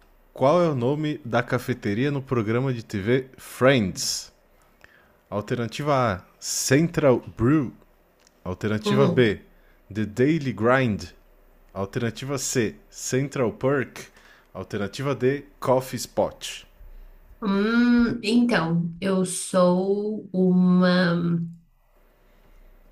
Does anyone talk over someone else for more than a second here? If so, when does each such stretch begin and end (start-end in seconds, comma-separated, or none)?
none